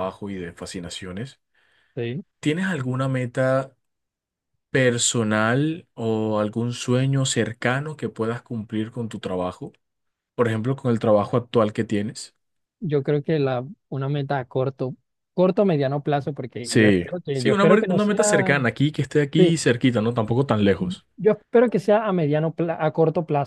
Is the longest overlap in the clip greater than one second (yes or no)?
yes